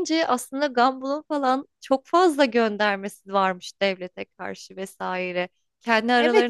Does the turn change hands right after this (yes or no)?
yes